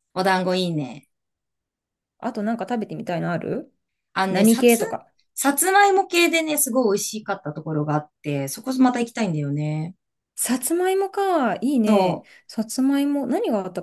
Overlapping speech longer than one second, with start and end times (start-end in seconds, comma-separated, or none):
none